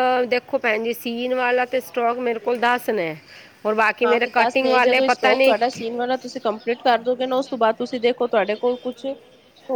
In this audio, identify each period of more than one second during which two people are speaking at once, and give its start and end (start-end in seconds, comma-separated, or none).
4.0-5.8